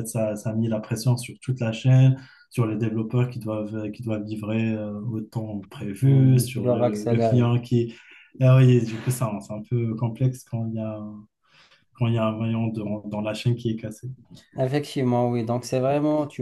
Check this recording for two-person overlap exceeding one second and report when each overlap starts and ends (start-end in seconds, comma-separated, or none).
6.0-7.5